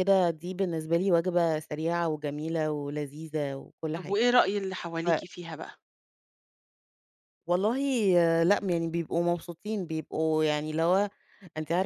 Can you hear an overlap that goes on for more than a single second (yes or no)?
no